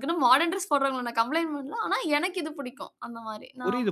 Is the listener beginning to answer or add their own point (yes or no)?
yes